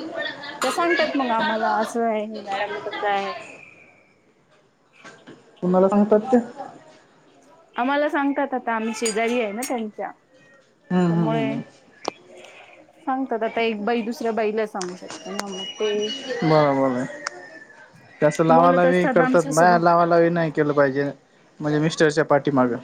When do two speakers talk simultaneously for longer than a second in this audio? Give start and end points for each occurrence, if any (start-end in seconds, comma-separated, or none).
18.5-19.8